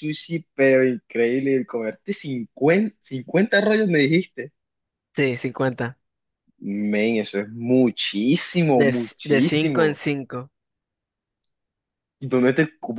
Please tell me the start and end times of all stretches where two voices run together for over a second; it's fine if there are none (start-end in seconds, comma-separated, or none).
8.7-10.0